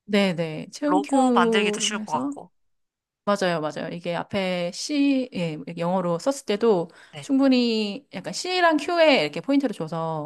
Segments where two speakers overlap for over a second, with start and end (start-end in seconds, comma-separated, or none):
0.9-2.3